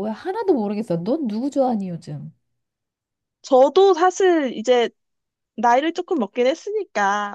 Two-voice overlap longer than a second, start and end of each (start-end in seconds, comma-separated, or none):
none